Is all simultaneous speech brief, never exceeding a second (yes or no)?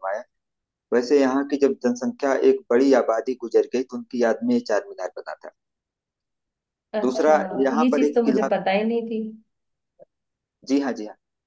no